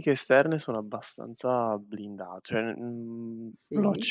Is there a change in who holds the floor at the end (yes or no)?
no